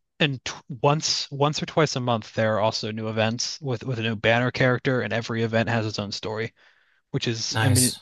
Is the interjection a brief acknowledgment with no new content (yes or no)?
yes